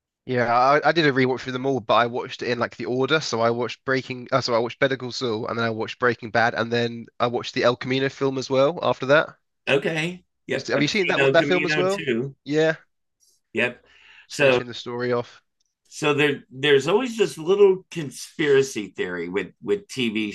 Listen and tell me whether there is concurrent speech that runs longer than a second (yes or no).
yes